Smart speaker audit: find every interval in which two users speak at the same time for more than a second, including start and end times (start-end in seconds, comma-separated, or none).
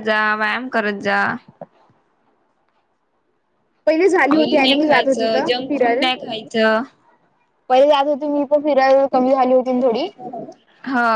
4.3-6.1